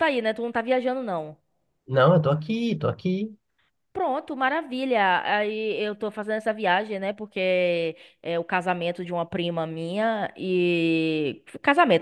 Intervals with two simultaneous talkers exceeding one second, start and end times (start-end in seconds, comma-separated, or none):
none